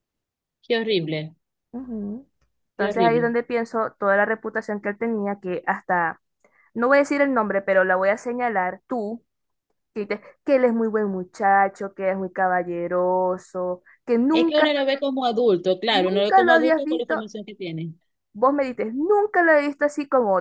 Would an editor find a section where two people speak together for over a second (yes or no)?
yes